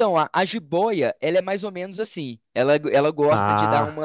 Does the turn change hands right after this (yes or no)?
no